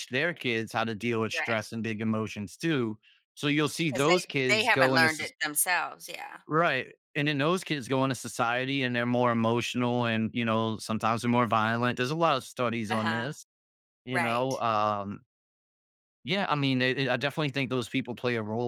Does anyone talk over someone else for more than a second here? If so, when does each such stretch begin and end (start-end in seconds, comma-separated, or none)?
3.8-5.3